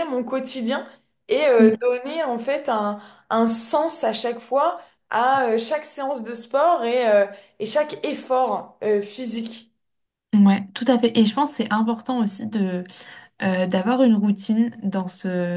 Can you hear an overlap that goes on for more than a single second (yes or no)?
no